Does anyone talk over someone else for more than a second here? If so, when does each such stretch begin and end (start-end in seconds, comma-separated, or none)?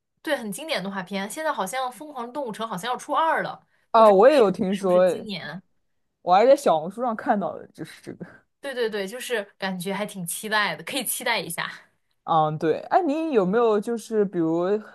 3.9-5.2